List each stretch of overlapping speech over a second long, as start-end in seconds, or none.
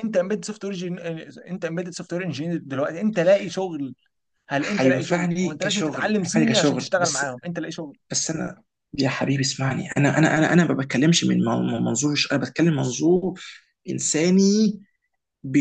4.6-7.2